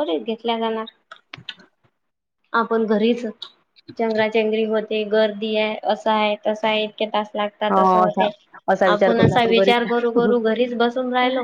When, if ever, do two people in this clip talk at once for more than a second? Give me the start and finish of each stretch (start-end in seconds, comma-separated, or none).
8.9-10.5